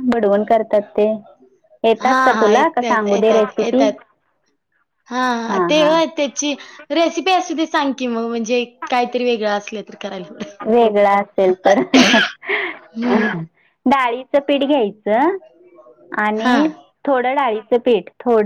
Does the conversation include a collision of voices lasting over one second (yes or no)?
yes